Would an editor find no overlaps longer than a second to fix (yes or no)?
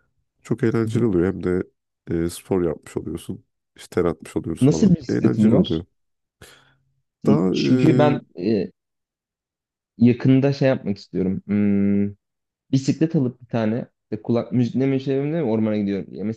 no